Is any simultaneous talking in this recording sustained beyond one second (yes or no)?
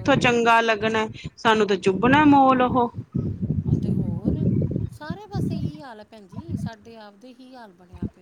no